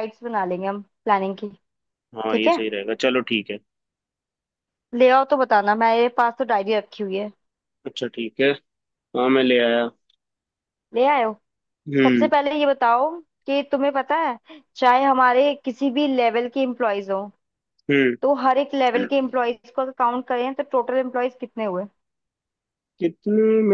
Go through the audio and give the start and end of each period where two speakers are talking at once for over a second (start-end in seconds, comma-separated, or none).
none